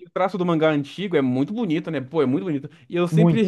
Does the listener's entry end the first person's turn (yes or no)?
no